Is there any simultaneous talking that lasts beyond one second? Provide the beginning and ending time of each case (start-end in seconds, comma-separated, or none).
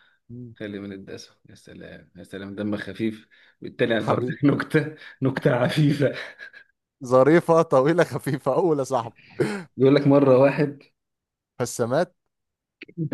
none